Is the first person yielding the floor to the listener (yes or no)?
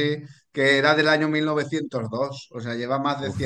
no